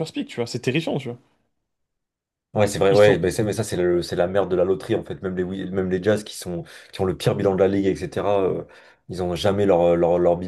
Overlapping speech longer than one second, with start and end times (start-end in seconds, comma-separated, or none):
none